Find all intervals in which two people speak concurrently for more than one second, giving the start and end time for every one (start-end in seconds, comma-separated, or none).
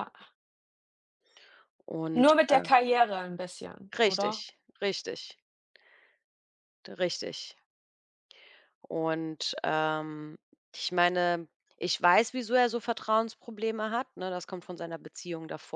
none